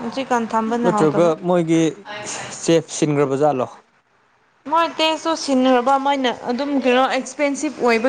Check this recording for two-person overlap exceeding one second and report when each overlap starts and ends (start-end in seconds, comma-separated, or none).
none